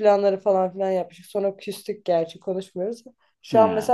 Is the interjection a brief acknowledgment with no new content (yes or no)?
yes